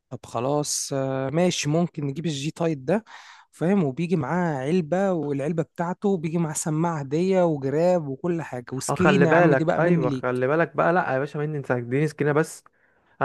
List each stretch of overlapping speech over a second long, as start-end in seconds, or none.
8.9-10.5